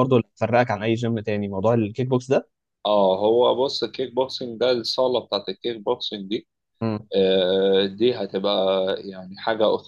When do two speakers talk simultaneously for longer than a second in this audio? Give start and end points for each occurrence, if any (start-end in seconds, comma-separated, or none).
none